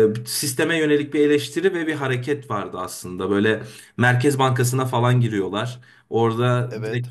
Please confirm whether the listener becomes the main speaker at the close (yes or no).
no